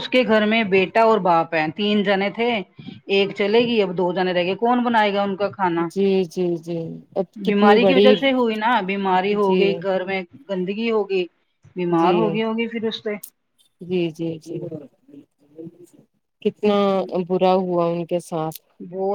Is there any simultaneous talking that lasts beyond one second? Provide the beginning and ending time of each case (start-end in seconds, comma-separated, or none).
none